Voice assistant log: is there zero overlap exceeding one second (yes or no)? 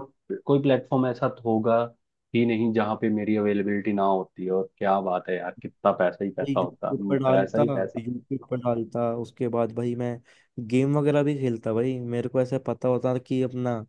no